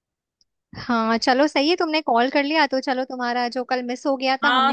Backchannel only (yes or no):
no